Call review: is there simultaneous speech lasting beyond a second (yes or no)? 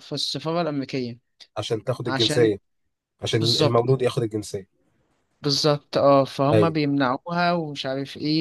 no